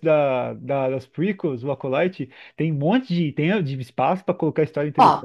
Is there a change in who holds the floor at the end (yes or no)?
yes